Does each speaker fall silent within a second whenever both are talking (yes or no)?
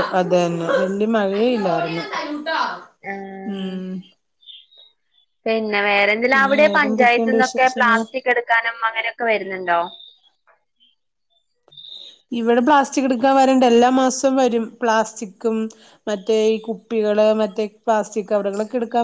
no